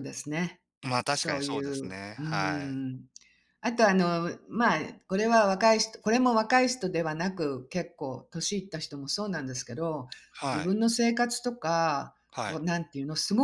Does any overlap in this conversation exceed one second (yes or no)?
yes